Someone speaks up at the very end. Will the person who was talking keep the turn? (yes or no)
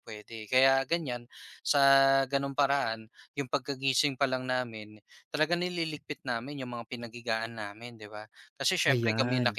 yes